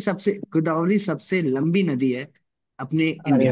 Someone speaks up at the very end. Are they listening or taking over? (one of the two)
taking over